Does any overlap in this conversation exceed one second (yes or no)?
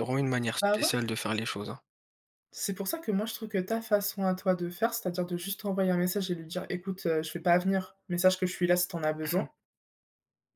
no